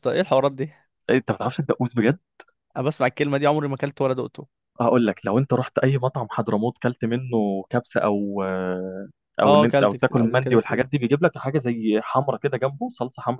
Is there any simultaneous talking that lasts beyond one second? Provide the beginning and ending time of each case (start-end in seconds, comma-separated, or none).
9.4-10.9